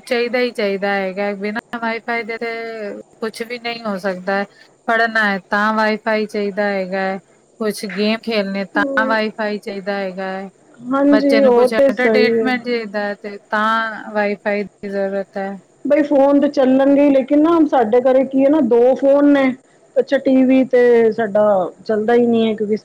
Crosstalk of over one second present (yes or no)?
yes